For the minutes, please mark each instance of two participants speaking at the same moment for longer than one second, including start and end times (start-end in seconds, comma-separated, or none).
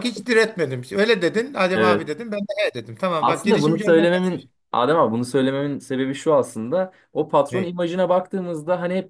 3.2-4.5